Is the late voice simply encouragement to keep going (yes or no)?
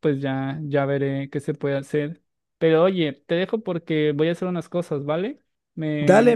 no